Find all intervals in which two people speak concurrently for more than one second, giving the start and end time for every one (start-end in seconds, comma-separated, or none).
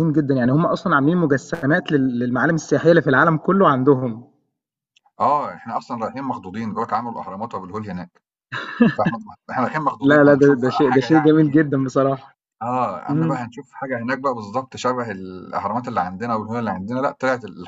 10.0-11.4